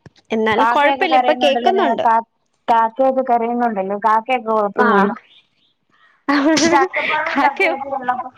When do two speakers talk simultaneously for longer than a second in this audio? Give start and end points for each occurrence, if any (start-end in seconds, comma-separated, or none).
0.6-2.0